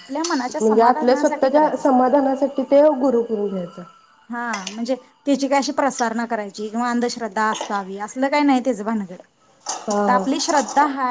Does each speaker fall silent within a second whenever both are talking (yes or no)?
no